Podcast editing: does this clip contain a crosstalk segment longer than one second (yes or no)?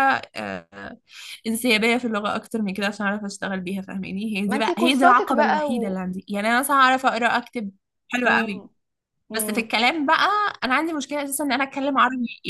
yes